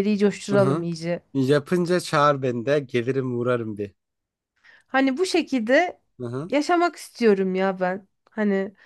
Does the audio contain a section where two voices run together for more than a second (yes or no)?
no